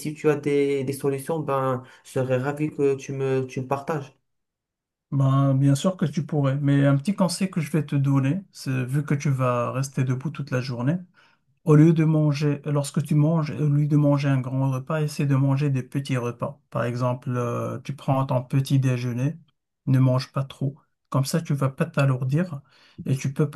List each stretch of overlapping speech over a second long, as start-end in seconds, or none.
none